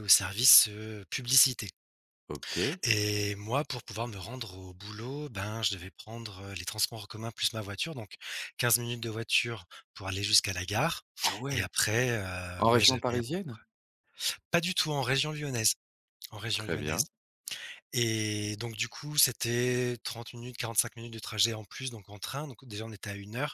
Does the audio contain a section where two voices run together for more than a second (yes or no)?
no